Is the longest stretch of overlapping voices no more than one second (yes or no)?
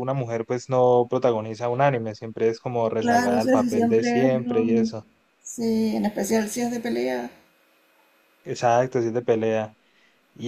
no